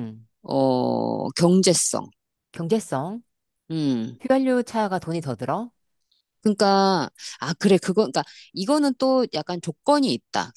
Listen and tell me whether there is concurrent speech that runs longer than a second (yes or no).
no